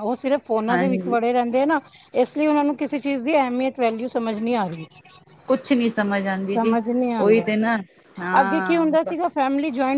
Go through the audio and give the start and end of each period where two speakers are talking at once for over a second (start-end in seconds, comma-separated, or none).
none